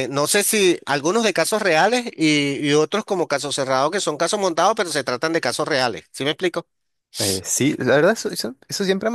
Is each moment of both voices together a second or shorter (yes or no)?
yes